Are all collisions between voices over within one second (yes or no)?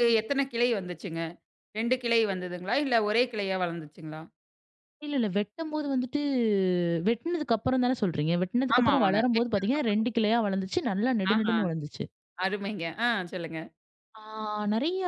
no